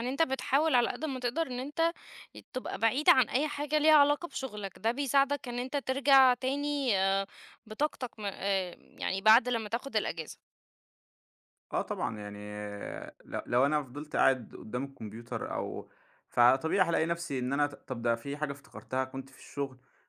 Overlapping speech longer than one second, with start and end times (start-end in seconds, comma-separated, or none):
none